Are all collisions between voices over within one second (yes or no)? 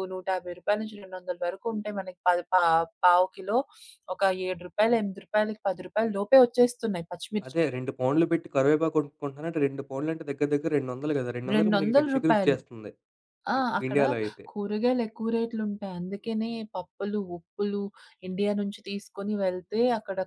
no